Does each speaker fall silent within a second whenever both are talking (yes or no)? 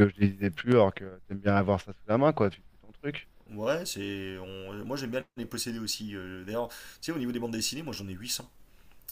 yes